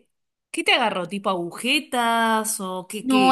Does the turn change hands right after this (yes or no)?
yes